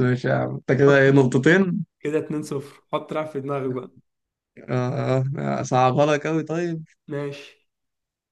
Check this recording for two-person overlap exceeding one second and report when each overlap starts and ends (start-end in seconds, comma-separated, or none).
none